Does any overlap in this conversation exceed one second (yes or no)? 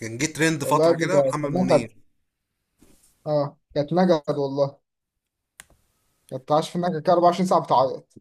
yes